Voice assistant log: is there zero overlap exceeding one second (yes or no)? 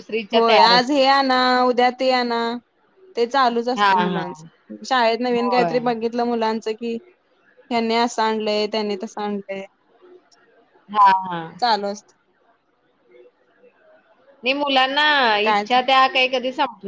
yes